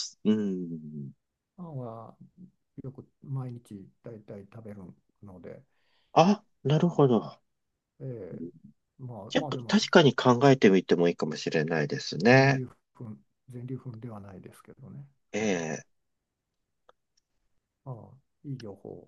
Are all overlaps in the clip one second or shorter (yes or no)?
yes